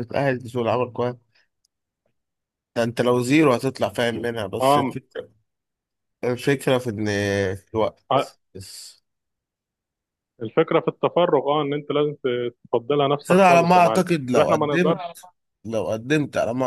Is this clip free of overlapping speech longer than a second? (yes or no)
no